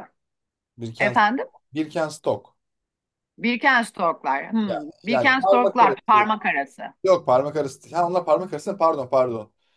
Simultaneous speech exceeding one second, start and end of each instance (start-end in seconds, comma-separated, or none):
4.7-6.3